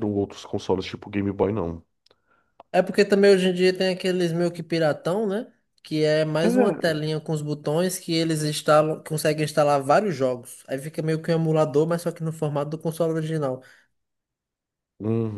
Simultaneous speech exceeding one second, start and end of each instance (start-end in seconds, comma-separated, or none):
none